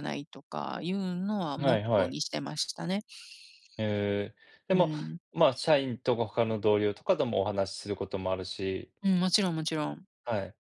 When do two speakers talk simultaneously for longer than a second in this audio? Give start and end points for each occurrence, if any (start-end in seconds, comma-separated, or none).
none